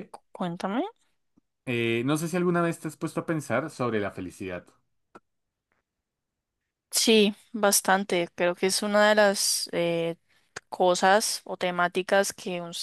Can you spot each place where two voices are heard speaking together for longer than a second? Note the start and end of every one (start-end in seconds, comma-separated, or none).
none